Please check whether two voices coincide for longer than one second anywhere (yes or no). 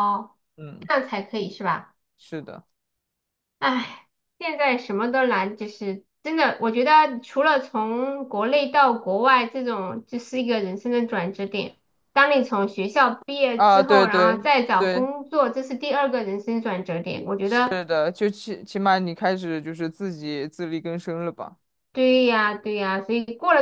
yes